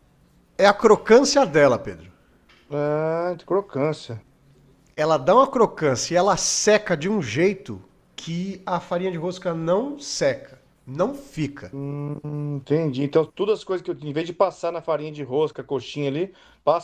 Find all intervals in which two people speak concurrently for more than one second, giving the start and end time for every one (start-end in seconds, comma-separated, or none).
none